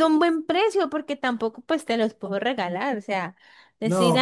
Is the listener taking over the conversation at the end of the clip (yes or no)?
yes